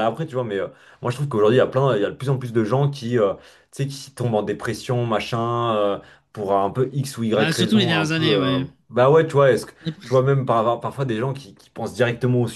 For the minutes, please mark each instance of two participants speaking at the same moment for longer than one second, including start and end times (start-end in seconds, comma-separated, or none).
7.3-8.6